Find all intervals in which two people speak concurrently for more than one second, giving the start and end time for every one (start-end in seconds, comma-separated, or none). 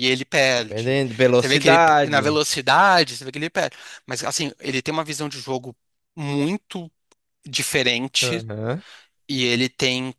0.5-2.4